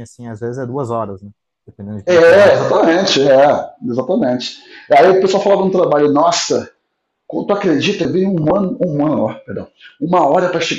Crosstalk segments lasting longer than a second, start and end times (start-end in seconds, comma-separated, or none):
none